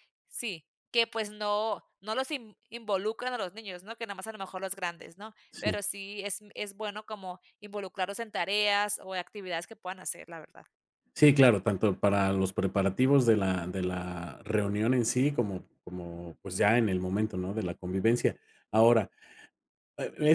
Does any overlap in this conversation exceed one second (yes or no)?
no